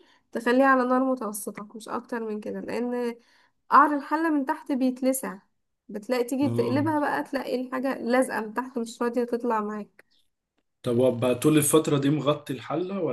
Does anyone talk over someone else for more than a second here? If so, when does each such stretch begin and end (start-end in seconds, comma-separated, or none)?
none